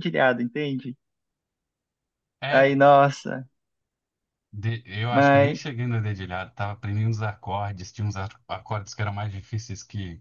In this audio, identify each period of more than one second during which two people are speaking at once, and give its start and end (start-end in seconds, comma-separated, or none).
none